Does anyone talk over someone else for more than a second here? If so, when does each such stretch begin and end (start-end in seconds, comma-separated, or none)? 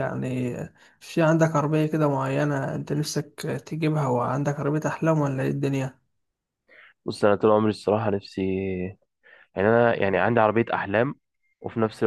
none